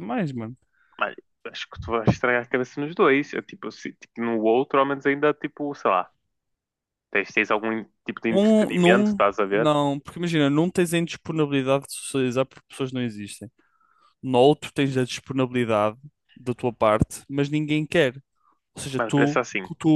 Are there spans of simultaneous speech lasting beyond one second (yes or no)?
yes